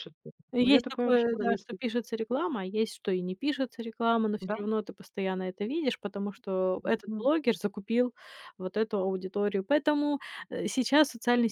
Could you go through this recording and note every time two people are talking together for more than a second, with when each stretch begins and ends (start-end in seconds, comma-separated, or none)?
0.6-1.8